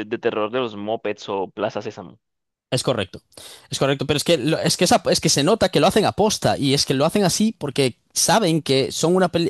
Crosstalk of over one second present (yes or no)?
no